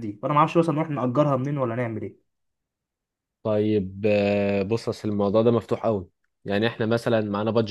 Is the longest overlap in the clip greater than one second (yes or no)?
no